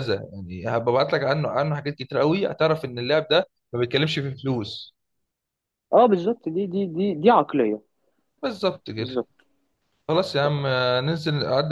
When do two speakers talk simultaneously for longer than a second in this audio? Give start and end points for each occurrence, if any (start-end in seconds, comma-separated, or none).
none